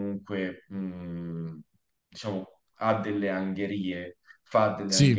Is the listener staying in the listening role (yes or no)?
yes